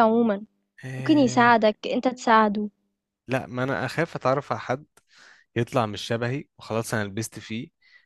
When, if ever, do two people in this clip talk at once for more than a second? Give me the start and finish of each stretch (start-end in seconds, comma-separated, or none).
none